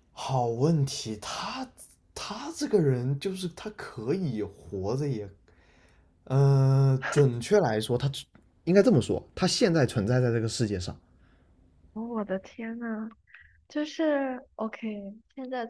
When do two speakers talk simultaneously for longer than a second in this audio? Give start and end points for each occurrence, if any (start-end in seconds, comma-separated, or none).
none